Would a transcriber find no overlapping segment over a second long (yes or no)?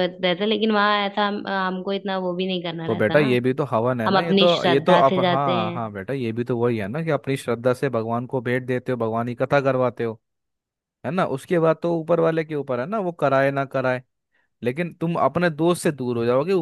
no